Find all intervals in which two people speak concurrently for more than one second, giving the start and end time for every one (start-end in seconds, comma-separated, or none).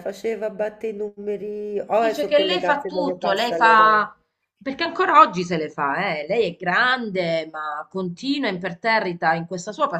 1.9-4.1